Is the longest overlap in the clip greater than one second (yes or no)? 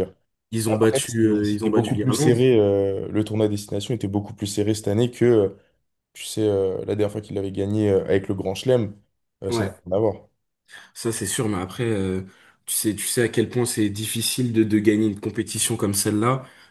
yes